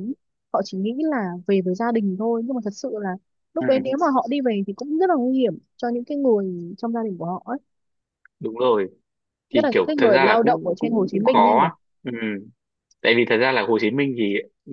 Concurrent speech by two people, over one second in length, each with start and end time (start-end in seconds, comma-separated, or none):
9.5-11.7